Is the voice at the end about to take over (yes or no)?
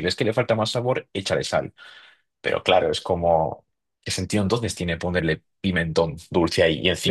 no